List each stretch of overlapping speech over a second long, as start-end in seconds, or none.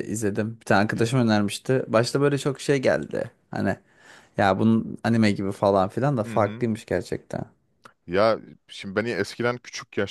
none